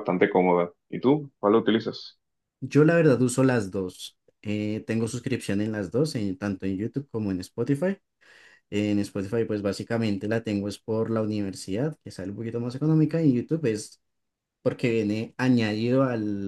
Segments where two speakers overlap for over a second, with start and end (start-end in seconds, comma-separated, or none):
none